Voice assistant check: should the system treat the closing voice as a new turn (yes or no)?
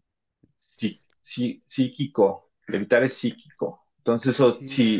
no